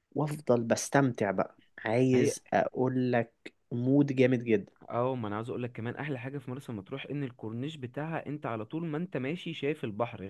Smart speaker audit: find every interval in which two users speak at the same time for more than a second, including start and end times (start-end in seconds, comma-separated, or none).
none